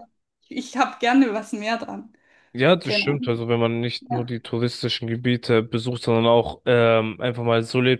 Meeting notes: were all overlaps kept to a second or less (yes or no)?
yes